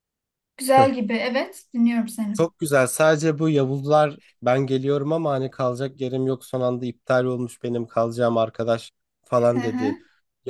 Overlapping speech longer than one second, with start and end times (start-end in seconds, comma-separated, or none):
none